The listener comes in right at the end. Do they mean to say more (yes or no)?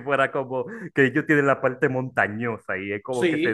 yes